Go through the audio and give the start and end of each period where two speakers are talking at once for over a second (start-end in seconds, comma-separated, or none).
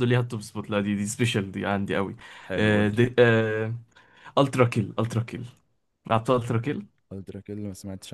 none